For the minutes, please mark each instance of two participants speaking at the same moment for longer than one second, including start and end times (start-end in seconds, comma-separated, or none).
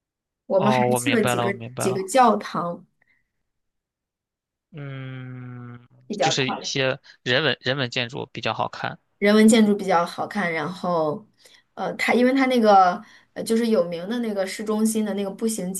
0.5-2.1